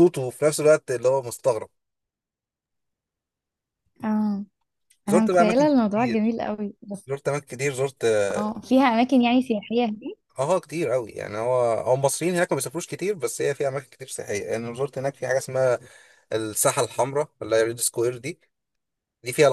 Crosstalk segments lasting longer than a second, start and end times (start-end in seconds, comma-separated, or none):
5.1-6.3